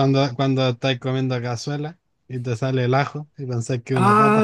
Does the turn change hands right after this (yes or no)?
yes